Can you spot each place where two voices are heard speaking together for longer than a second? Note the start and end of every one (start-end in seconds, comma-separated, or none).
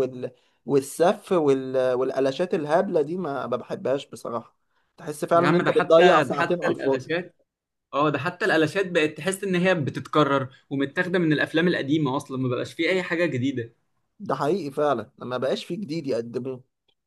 5.3-7.1